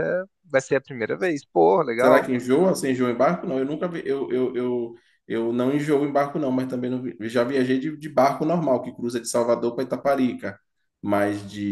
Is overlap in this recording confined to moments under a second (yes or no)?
yes